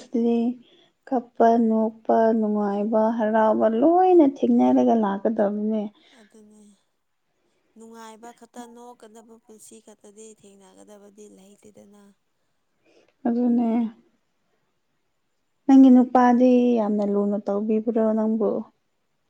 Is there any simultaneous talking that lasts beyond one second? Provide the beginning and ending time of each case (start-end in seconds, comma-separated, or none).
none